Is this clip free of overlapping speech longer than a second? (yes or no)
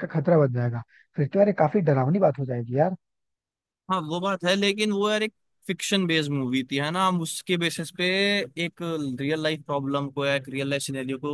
yes